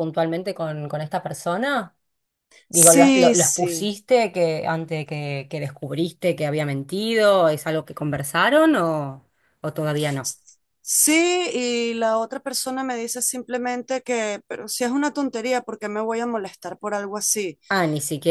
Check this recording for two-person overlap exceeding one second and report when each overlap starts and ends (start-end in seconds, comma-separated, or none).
2.7-3.9